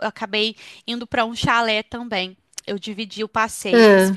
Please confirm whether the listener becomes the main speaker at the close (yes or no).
no